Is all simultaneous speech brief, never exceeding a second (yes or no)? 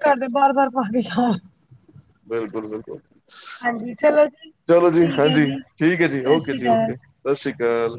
no